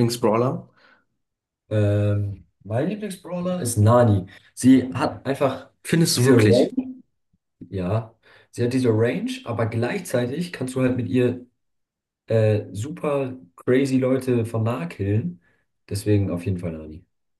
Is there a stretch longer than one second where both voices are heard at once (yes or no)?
no